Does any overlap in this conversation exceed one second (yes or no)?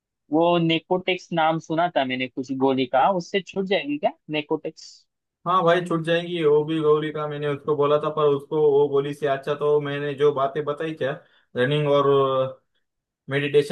no